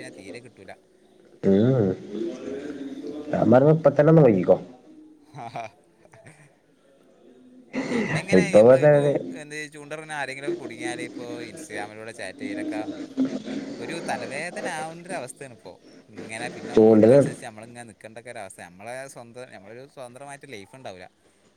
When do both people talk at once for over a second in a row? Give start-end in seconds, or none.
none